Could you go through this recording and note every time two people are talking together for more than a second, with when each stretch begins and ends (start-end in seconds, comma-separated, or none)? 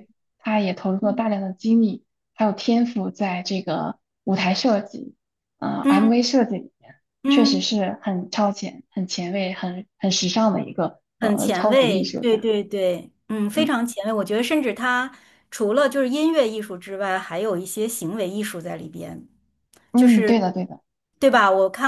11.2-12.5